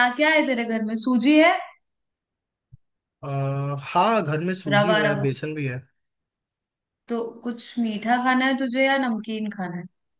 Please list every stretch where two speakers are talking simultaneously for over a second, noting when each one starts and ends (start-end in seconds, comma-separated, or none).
none